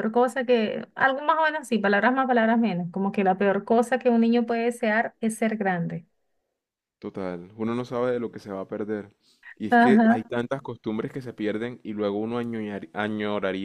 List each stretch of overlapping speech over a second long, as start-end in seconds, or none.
none